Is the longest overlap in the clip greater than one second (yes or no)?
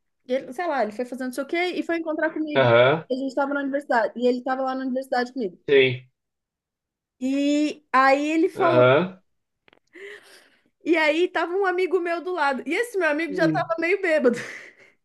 no